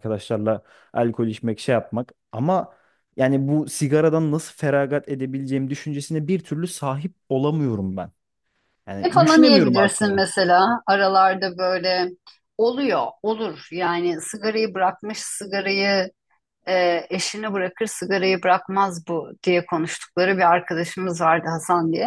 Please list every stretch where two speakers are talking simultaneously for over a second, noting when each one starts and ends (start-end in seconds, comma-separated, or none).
9.0-10.2